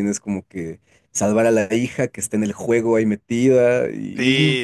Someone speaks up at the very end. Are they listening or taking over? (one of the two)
taking over